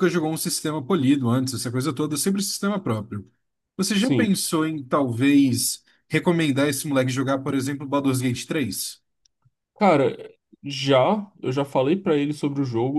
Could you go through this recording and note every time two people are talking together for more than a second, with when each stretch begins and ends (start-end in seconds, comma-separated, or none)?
none